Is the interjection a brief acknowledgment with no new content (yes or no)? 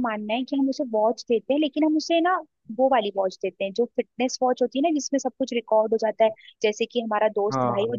yes